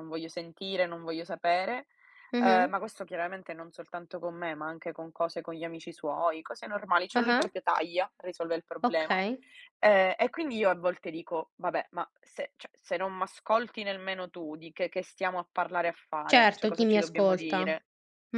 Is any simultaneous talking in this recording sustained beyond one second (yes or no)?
yes